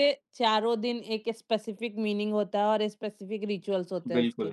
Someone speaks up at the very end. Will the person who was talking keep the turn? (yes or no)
no